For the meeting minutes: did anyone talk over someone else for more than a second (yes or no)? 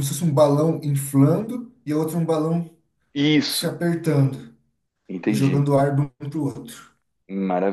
no